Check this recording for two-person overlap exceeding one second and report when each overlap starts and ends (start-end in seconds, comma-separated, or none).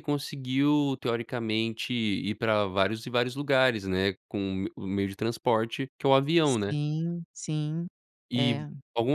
none